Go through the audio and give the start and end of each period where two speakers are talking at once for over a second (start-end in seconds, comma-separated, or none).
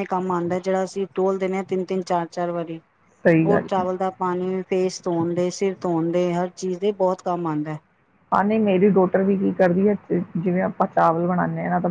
none